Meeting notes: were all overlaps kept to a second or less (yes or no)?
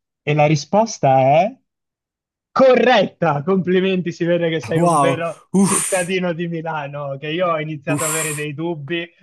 no